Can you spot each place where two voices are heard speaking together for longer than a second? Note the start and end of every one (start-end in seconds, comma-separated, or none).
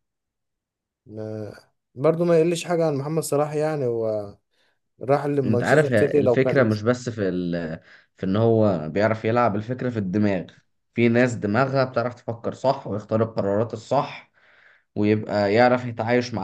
5.4-6.8